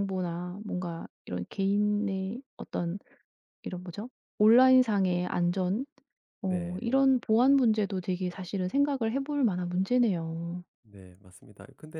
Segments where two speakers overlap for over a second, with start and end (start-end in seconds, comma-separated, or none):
none